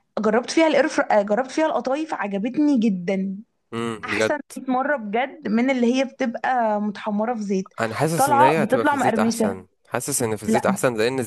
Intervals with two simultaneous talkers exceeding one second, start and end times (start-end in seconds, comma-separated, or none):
8.2-9.6